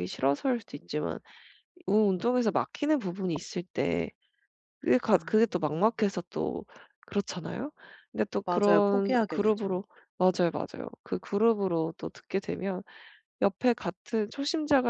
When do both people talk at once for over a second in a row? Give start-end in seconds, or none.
8.4-9.8